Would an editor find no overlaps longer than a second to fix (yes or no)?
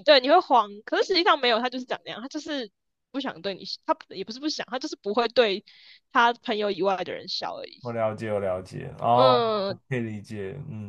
yes